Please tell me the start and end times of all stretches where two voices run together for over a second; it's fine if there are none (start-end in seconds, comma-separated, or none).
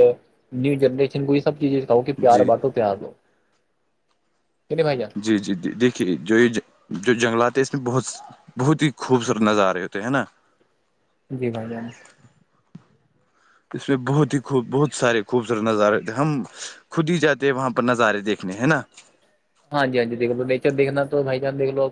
none